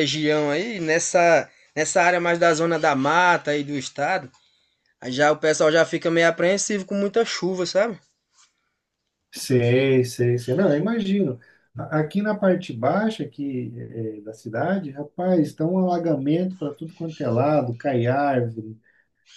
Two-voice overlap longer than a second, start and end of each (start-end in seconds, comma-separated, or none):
none